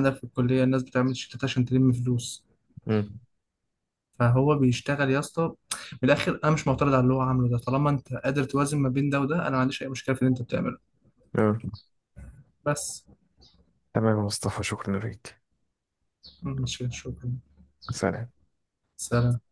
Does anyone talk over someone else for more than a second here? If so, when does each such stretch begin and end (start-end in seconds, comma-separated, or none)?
none